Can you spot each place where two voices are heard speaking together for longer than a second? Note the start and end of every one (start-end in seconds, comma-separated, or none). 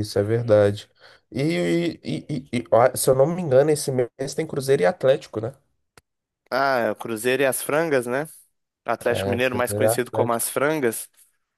9.1-10.5